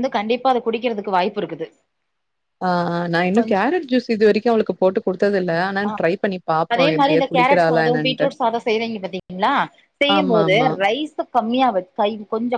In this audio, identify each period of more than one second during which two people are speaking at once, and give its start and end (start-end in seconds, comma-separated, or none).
6.7-8.3